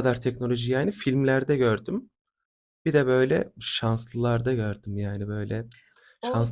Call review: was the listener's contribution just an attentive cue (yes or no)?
no